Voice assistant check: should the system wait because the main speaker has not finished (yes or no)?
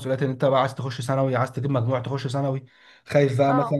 yes